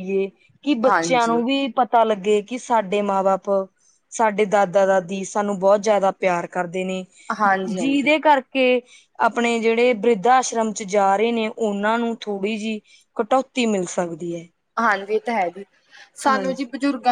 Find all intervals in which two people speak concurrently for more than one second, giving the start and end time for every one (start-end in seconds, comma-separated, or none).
none